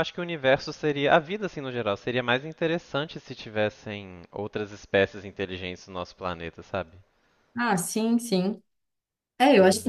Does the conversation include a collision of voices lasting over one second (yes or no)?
no